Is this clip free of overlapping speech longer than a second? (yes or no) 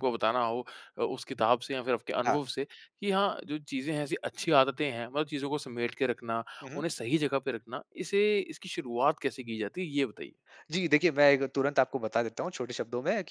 yes